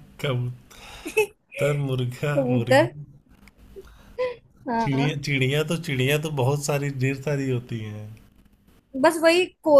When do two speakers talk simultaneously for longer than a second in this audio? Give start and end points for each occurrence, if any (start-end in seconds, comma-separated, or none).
none